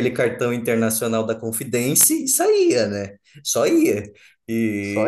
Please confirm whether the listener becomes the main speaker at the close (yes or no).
no